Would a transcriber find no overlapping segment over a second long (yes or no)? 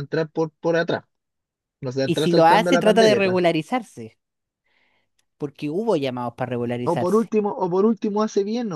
no